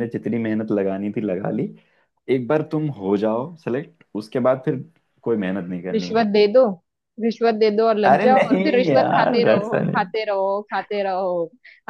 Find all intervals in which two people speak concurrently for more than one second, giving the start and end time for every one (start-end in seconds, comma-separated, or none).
8.1-10.1